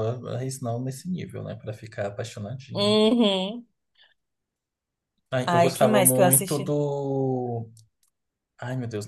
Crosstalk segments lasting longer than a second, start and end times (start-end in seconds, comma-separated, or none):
5.5-6.8